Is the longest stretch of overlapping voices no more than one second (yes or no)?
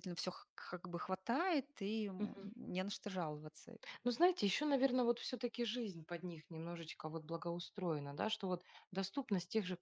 yes